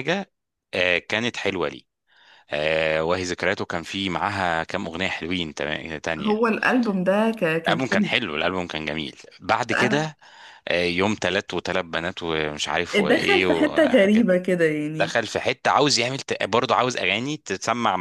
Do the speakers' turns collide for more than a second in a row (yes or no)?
yes